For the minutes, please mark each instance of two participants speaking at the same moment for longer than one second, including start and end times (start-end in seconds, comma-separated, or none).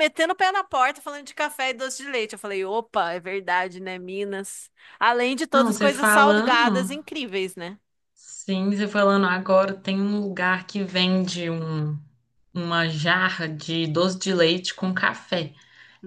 5.5-6.9